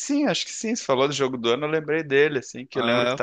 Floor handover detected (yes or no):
no